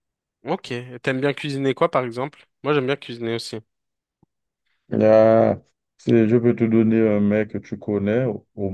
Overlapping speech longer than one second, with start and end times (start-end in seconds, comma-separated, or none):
none